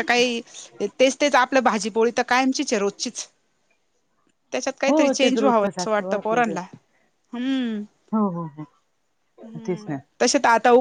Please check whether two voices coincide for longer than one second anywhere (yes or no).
yes